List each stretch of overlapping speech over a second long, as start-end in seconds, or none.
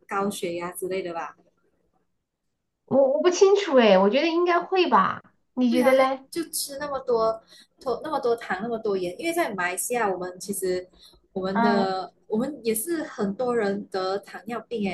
none